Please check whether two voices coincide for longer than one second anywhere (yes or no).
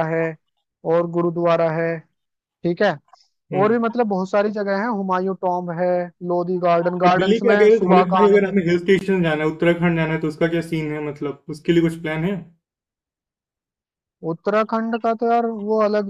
yes